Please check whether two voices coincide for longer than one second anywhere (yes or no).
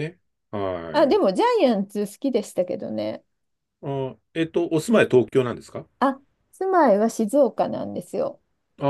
no